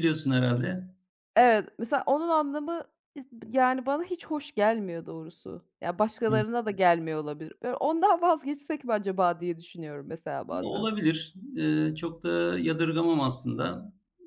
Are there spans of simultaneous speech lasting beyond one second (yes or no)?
no